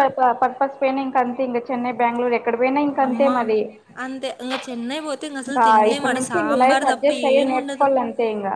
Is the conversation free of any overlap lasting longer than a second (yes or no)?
no